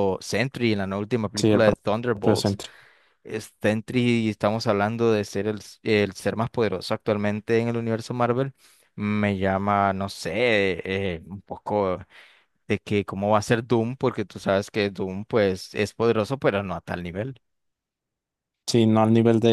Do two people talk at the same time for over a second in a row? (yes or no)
yes